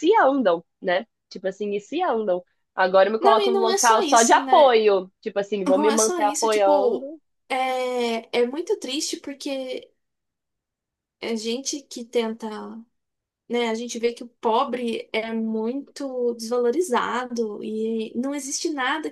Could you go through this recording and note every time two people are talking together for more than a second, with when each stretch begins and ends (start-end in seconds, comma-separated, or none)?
3.2-4.8, 5.8-7.1